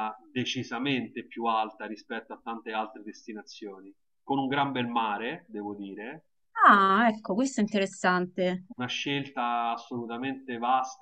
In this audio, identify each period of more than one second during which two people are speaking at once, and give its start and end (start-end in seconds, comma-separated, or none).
none